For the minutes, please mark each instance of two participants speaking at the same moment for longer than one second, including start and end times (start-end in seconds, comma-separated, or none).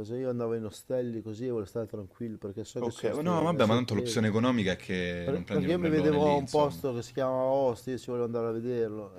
2.8-4.2, 5.2-6.8